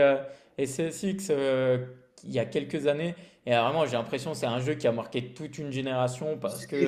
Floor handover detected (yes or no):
yes